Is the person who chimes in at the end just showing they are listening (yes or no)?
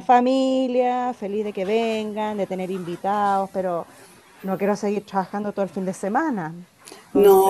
no